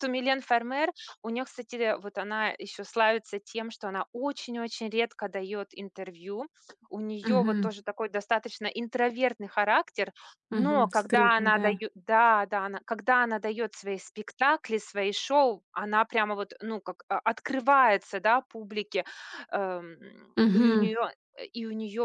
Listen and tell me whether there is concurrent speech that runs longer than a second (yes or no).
yes